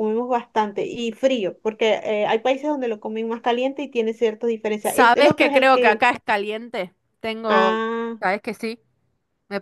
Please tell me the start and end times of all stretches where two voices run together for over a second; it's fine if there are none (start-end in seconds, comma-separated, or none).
4.8-6.1